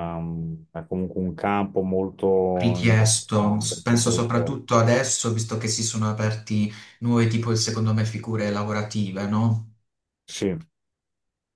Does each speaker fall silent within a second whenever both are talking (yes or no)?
no